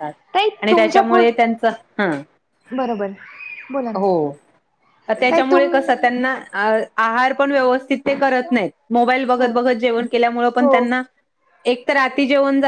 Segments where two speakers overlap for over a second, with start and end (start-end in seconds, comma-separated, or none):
none